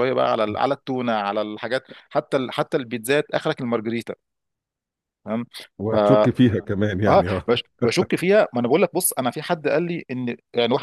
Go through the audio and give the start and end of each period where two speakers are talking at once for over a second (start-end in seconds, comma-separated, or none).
none